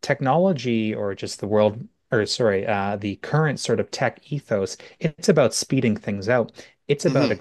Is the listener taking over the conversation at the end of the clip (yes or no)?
no